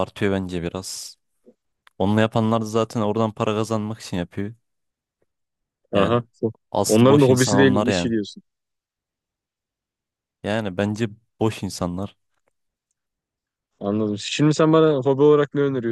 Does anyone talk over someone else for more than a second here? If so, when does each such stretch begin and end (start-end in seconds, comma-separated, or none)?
6.9-8.1